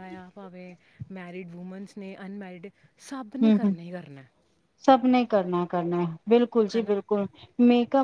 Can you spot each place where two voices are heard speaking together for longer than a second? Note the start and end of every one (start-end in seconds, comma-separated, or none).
none